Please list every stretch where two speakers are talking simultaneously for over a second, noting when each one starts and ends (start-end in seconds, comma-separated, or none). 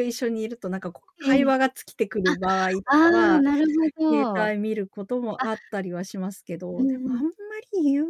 none